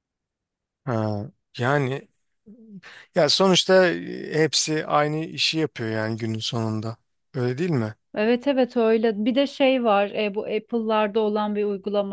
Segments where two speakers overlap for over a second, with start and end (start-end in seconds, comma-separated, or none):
none